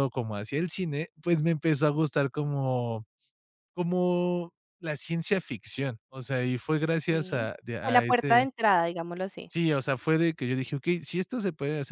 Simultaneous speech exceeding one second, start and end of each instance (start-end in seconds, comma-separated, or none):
6.7-8.5